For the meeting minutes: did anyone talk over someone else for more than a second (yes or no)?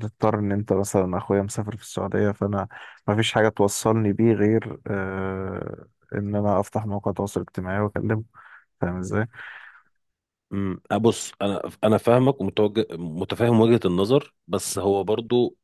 no